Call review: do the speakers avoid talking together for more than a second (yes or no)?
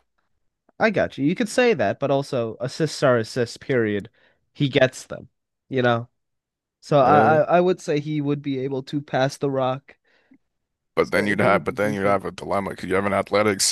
no